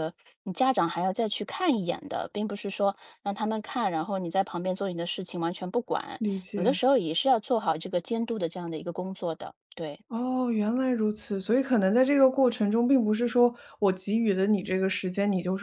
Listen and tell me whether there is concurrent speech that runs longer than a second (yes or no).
no